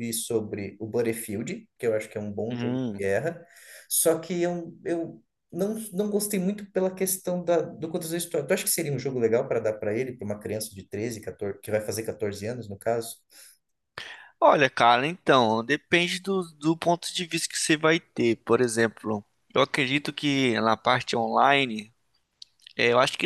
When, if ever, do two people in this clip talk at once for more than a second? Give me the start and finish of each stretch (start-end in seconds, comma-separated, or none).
none